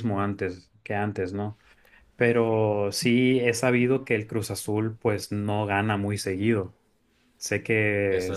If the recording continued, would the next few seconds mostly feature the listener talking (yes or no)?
no